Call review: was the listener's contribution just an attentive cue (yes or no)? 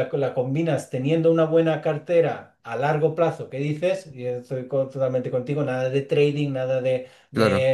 yes